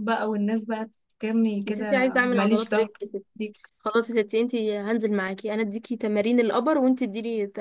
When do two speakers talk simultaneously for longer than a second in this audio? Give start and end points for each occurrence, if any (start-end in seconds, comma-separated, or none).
1.6-3.0